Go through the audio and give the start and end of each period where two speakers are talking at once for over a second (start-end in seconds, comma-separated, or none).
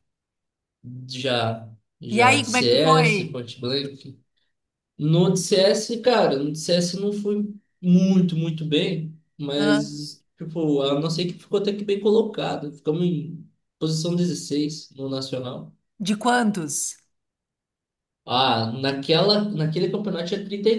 2.1-3.4